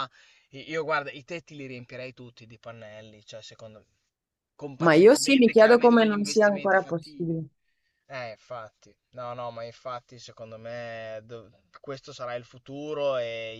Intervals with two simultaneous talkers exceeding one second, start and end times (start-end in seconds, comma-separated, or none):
4.8-7.4